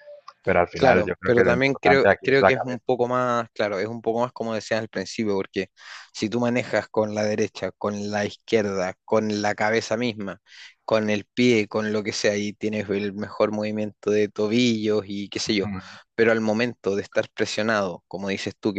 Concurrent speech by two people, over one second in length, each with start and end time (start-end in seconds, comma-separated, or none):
0.8-2.9